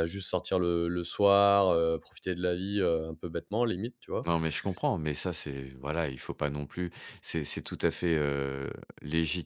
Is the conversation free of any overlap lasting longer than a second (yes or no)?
yes